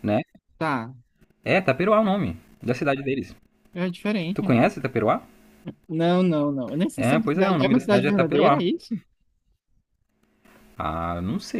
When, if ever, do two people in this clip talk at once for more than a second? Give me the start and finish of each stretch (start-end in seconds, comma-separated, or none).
7.0-8.6